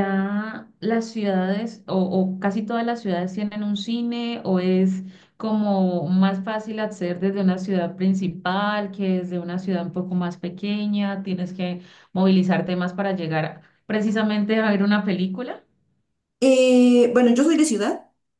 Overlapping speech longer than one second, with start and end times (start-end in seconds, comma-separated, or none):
none